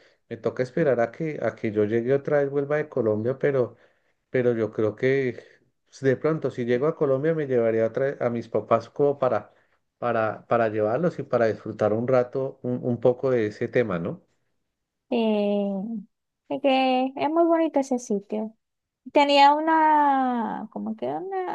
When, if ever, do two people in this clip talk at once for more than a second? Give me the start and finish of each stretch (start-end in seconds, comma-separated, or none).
none